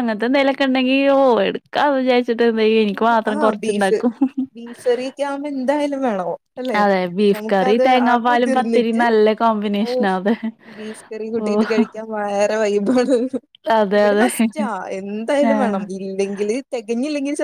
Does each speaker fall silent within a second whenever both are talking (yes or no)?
no